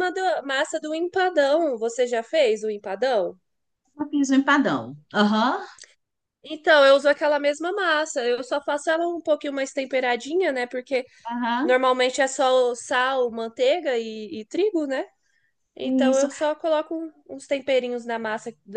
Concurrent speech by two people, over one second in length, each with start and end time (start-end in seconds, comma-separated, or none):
none